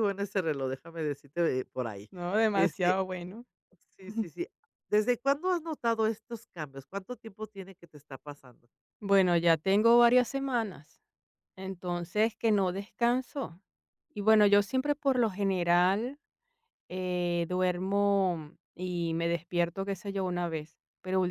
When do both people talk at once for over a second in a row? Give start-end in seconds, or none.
none